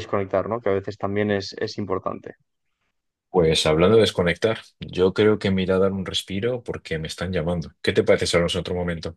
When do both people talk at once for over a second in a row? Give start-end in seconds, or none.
none